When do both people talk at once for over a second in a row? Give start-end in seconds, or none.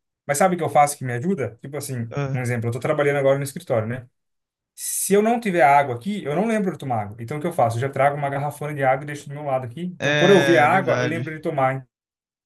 10.0-11.3